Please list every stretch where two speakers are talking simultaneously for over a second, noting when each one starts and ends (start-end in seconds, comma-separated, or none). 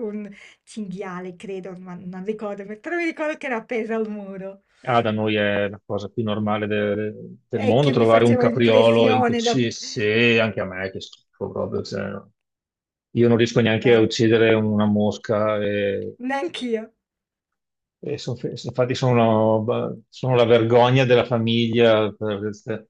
7.5-9.6